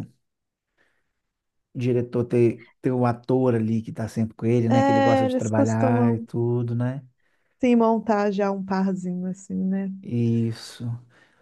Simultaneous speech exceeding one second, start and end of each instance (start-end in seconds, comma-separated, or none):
4.7-6.3